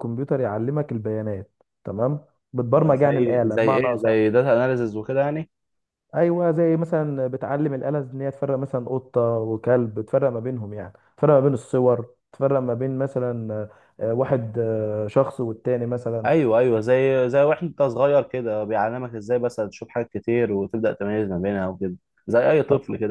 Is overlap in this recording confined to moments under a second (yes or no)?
no